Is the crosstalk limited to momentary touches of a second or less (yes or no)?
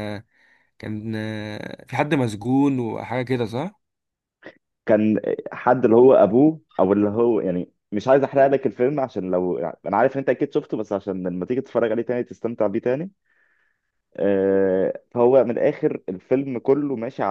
yes